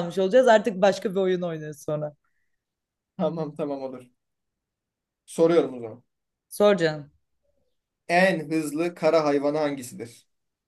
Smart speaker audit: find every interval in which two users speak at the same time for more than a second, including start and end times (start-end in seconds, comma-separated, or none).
none